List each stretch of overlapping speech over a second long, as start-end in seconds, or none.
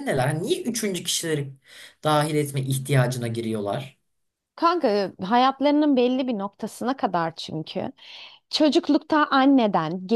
none